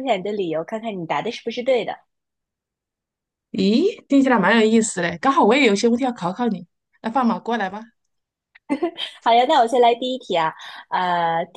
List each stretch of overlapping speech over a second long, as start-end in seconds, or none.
none